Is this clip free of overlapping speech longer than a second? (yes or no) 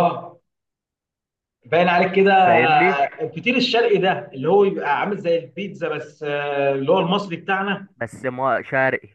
yes